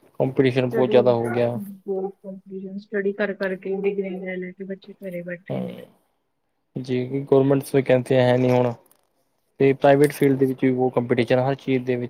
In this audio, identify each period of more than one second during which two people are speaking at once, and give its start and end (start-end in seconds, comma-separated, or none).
none